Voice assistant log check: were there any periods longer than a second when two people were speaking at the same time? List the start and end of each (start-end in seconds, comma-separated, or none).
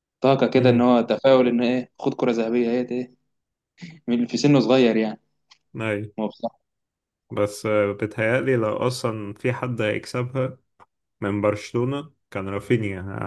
none